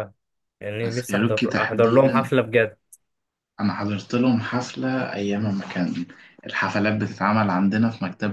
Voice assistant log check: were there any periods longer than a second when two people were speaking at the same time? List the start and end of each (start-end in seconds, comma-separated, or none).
0.8-2.3